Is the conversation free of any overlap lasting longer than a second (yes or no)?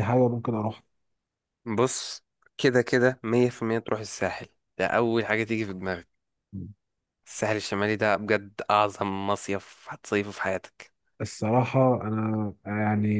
yes